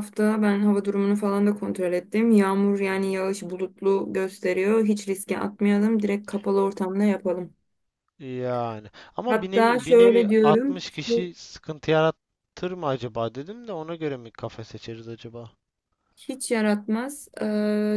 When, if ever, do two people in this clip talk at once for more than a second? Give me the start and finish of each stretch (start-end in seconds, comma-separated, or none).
9.3-11.3